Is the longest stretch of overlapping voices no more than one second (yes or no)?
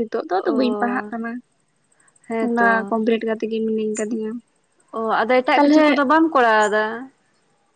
yes